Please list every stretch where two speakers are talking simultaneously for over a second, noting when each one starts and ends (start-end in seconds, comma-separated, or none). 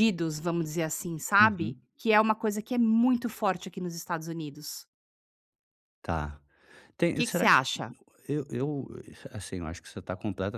none